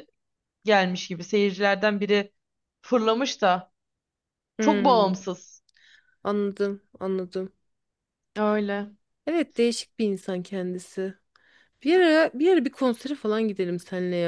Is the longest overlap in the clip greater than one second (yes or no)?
no